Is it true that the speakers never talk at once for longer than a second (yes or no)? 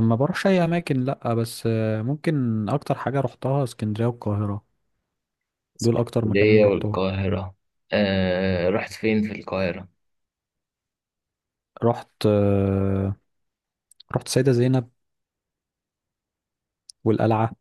no